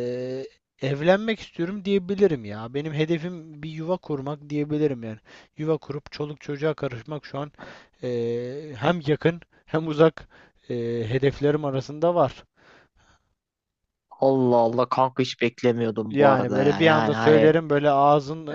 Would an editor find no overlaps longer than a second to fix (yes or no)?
no